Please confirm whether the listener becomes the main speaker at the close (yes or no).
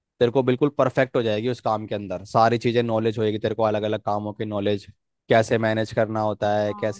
no